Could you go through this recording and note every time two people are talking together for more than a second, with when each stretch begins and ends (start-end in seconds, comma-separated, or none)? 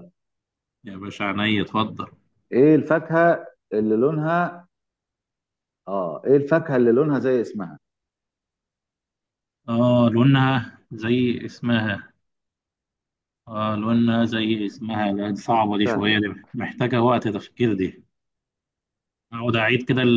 none